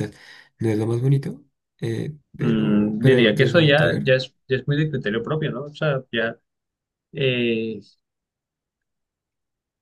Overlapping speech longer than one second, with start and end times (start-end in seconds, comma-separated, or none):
2.3-4.0